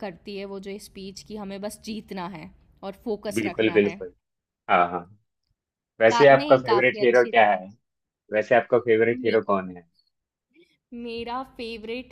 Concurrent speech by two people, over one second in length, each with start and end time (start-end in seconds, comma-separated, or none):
6.1-7.5